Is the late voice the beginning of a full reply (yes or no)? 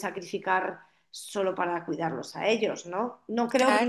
no